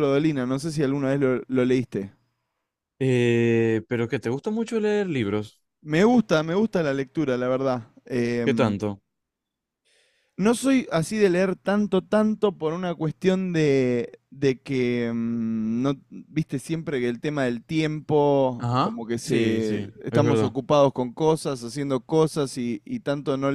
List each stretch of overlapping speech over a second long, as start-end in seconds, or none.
18.6-20.5